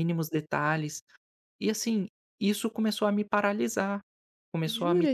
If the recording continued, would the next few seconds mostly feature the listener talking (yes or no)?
yes